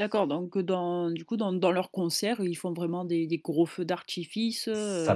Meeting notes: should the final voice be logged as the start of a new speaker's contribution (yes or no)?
yes